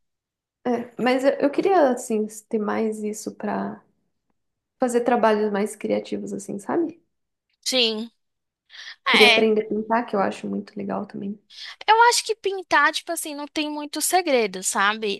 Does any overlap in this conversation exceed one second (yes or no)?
no